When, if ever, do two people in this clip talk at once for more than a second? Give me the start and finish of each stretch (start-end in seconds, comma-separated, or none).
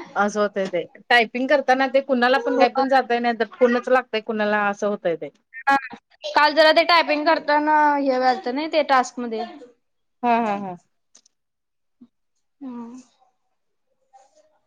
none